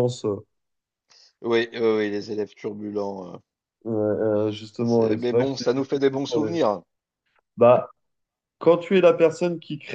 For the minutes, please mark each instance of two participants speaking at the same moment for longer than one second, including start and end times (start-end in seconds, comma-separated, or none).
4.8-6.6